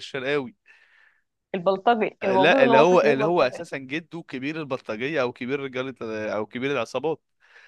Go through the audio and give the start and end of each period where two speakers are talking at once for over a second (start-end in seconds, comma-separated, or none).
2.2-3.6